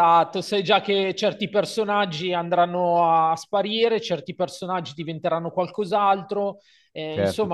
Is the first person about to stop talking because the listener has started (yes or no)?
yes